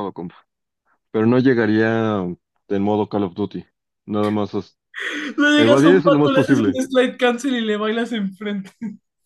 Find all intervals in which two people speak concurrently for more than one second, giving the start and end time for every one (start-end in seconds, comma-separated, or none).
5.6-6.8